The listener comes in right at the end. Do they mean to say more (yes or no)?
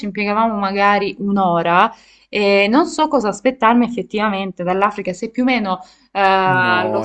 yes